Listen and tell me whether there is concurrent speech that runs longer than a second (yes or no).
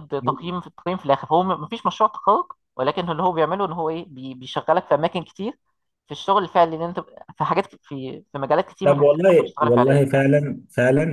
yes